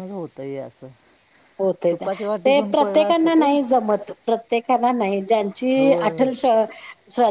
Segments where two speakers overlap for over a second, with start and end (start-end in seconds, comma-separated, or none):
1.9-3.5